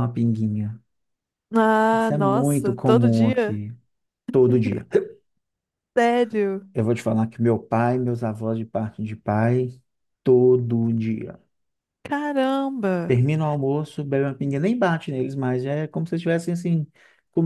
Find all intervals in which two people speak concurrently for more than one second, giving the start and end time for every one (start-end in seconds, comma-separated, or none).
1.9-3.6